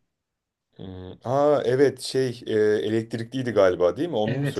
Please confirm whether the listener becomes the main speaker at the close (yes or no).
yes